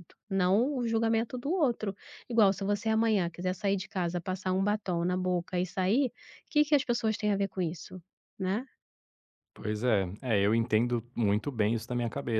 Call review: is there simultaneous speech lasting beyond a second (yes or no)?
no